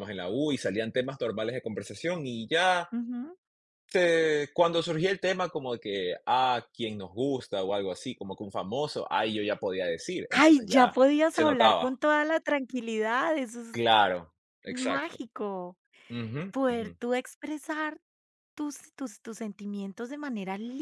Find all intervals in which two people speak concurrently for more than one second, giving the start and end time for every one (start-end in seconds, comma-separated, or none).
10.3-11.9